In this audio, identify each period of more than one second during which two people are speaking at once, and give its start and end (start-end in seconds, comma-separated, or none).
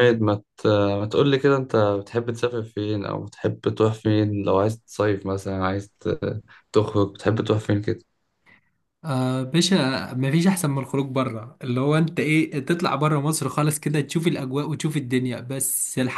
none